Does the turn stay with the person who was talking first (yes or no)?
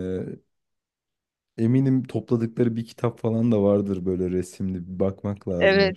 no